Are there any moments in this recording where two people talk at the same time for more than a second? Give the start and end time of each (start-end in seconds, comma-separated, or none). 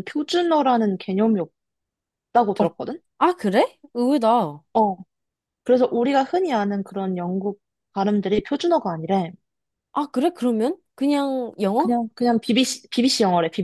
none